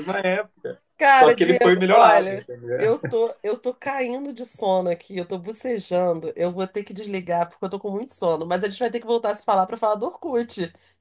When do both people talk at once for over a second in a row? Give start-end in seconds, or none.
1.0-2.9